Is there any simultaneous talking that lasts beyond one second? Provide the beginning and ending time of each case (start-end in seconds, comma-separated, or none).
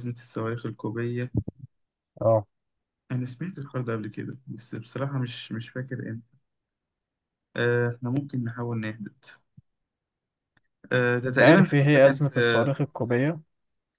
11.3-12.7